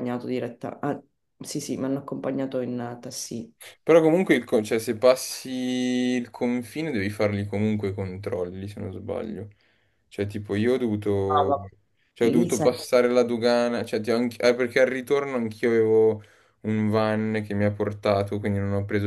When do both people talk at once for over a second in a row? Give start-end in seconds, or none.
none